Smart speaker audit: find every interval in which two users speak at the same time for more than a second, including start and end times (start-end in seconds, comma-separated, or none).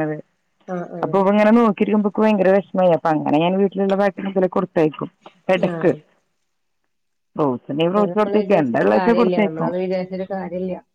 7.9-9.7